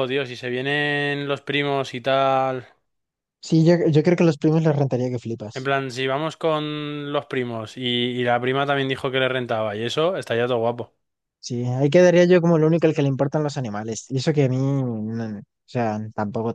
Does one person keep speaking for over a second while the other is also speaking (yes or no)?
no